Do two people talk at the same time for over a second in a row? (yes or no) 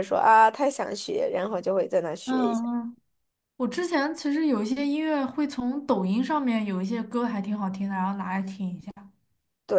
no